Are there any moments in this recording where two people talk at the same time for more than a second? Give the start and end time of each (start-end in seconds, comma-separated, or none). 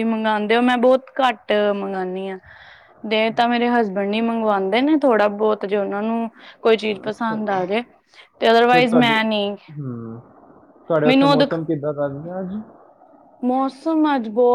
none